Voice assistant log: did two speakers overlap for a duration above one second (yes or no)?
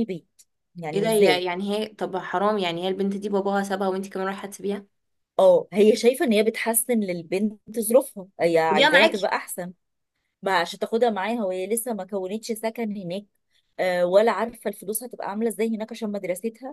no